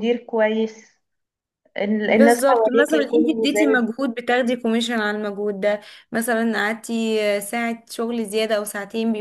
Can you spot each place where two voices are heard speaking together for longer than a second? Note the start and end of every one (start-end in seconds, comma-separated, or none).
2.1-3.9